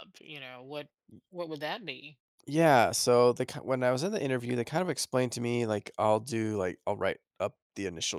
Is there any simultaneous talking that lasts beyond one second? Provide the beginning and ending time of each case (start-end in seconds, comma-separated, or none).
none